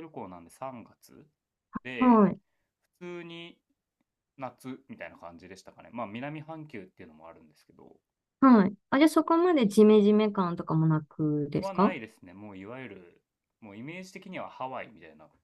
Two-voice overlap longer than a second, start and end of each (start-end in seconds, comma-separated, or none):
none